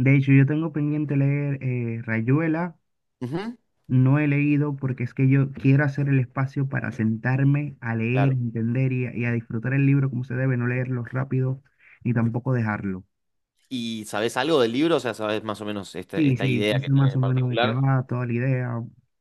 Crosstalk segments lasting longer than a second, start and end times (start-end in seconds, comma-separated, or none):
16.1-17.8